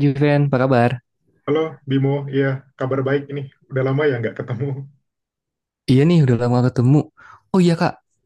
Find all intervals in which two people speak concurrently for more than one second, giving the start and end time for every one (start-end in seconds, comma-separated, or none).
none